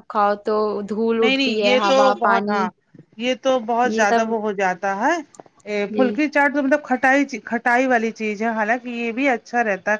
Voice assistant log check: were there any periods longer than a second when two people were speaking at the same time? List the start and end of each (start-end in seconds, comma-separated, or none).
1.2-2.6